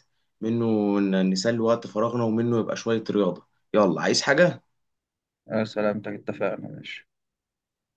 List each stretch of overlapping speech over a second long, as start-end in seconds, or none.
none